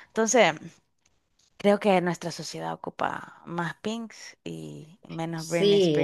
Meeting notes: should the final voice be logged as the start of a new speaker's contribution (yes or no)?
yes